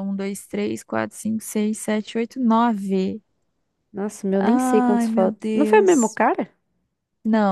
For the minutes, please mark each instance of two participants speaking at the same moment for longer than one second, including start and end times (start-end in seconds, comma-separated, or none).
4.4-6.2